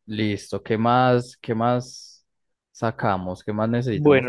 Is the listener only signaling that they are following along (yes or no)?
no